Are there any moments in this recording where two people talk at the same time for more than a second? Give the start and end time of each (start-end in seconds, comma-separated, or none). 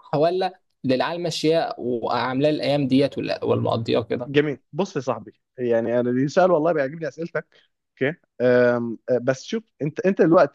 none